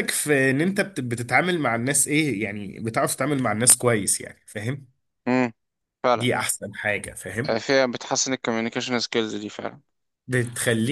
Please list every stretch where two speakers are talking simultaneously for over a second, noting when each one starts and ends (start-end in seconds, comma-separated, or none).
none